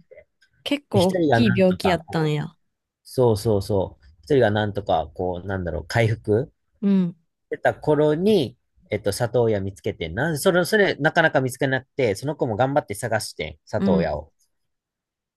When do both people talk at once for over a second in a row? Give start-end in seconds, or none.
0.9-2.4